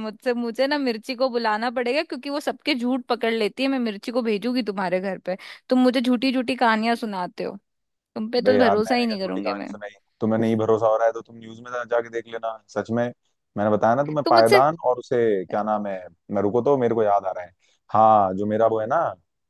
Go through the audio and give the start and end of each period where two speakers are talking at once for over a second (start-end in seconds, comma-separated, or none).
8.4-9.7